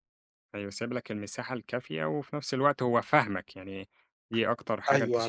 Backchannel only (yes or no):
no